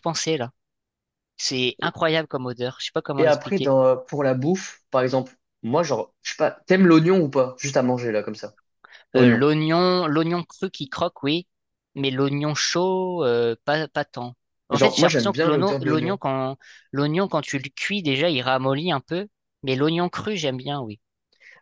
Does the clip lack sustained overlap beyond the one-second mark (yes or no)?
no